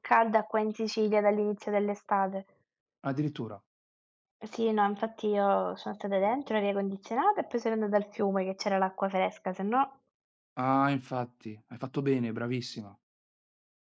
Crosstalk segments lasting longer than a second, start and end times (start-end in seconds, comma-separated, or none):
none